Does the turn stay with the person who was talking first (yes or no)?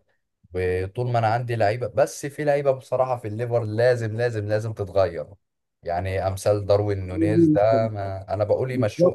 no